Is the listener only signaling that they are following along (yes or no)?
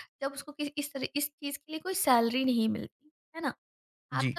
yes